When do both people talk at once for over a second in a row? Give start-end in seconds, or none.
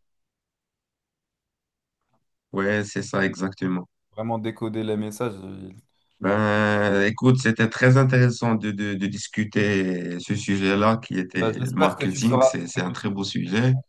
11.4-12.9